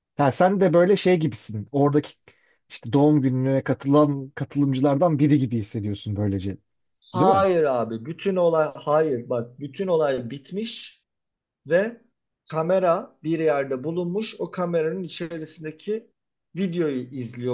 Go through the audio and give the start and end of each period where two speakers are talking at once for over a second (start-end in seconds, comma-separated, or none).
none